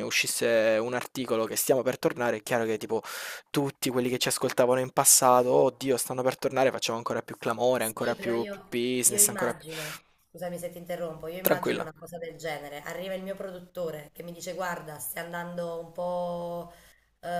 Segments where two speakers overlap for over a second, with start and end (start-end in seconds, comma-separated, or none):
7.8-9.6